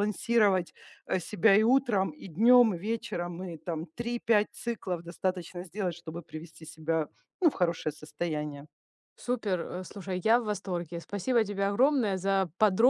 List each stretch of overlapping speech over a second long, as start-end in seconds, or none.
none